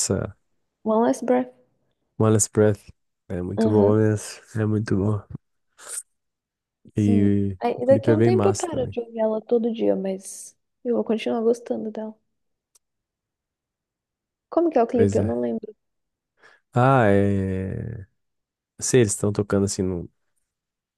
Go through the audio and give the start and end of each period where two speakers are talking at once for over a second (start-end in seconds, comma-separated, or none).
7.0-8.9